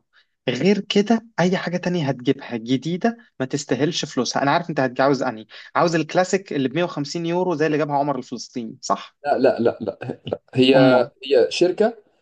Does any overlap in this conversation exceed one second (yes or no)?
no